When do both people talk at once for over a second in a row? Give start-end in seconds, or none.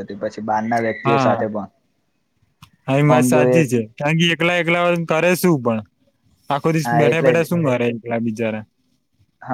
none